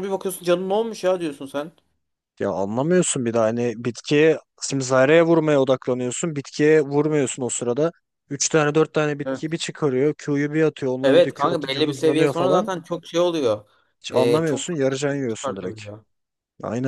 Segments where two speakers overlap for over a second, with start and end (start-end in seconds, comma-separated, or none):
11.0-12.7, 14.1-15.8